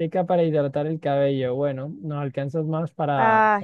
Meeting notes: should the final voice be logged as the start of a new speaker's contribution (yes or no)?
no